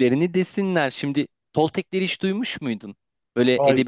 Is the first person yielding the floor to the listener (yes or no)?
no